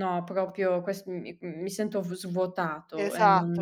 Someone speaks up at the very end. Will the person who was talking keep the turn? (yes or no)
no